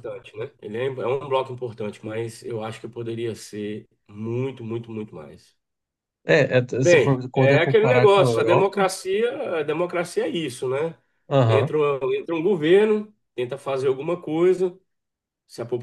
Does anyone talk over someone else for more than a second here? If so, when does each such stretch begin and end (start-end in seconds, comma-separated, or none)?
6.8-8.9